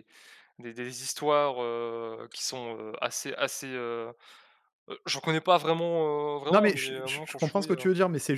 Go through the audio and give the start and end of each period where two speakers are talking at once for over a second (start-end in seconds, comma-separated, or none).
6.5-7.8